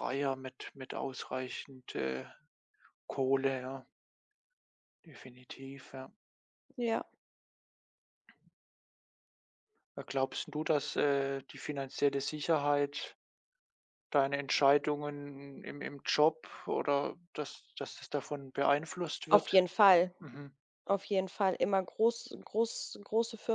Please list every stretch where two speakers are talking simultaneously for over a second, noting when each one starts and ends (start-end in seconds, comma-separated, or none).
none